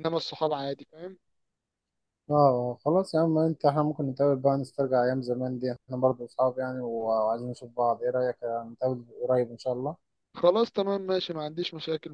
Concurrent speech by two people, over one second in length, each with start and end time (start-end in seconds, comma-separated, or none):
none